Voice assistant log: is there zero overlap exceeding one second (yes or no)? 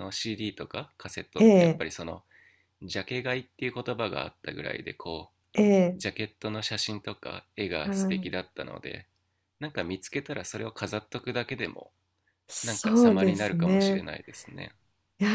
no